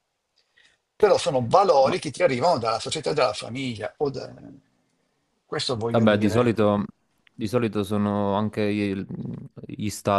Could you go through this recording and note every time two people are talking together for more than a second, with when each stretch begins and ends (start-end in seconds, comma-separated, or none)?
none